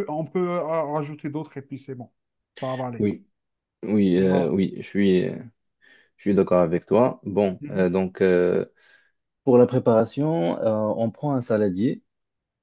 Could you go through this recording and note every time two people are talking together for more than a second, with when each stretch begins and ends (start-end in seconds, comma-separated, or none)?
none